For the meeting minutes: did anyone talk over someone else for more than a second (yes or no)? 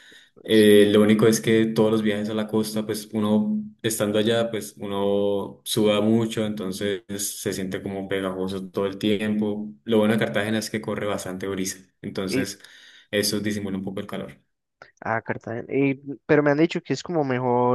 no